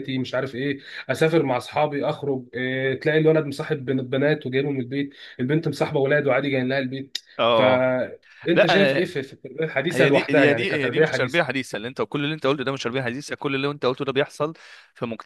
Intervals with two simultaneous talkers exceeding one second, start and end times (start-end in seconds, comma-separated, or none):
9.9-11.6